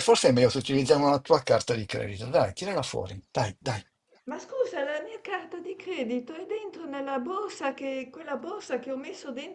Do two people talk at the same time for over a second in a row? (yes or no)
no